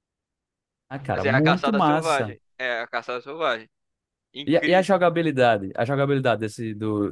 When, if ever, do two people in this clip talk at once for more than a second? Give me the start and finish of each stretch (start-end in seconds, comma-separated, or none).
1.1-2.4